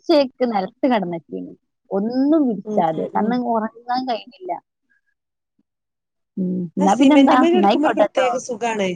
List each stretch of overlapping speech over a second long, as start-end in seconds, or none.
6.8-8.3